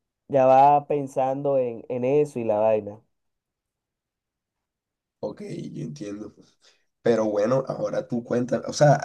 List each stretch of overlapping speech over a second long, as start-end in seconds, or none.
none